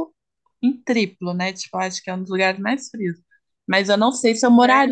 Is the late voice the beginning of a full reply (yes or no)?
no